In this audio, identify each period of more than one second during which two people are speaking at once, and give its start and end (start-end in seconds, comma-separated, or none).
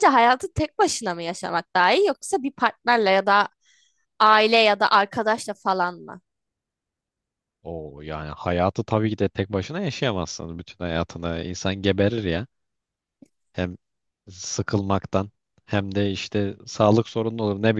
none